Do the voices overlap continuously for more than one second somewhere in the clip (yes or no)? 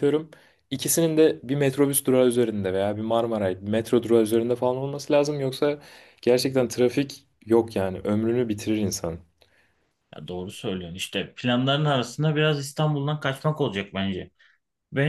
no